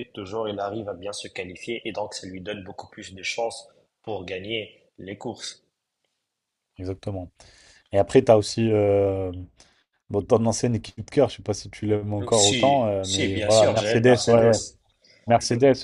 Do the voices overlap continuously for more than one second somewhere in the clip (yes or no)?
yes